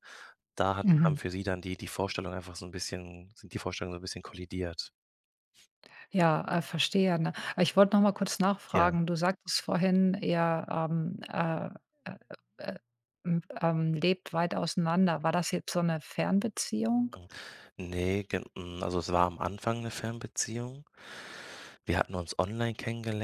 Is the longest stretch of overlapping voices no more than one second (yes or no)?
yes